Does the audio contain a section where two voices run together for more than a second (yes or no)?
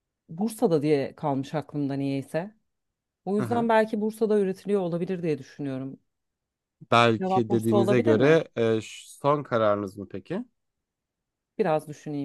yes